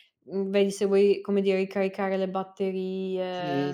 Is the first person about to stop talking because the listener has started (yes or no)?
yes